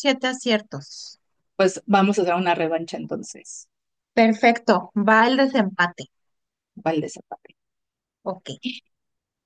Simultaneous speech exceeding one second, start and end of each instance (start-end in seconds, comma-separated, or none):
none